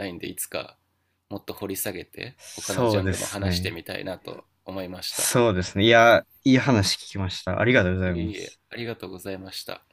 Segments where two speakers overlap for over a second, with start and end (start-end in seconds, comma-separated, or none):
2.4-3.7